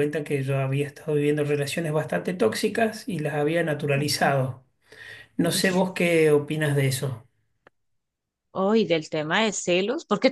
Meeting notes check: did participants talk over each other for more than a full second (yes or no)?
no